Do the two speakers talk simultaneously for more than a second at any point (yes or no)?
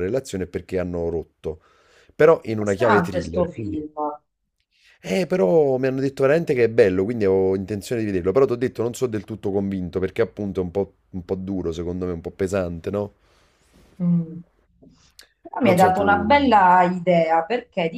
yes